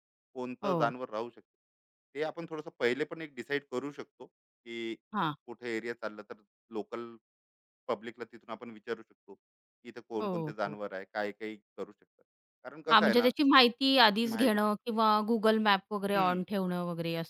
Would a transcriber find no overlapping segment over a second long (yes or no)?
yes